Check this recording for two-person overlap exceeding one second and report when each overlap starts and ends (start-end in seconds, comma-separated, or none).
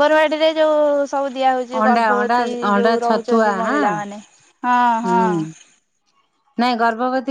1.8-3.8